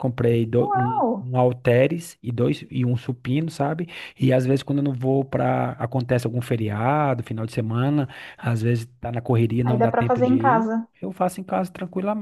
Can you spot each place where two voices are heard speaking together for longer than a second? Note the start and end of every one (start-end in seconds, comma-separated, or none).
9.6-10.9